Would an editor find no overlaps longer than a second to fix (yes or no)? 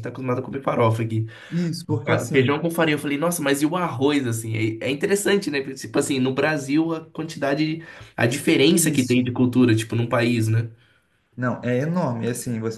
yes